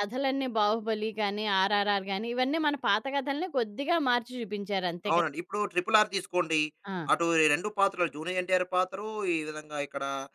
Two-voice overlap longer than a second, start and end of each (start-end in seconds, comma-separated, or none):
none